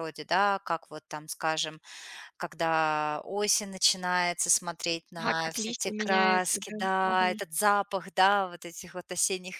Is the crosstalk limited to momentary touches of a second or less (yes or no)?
no